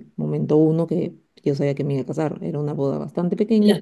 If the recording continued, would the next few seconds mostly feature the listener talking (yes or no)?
no